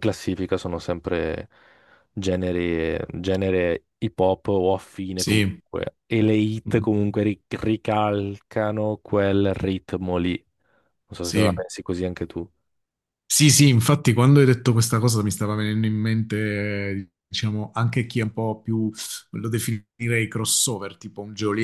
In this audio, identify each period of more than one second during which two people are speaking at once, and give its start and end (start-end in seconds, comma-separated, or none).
none